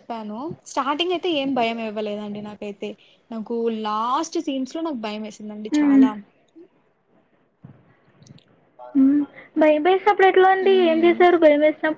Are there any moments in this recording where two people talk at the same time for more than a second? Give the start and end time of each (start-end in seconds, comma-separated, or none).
none